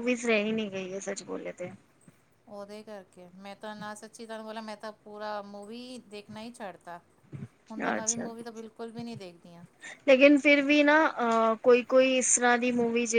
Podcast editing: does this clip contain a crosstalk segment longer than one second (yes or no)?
no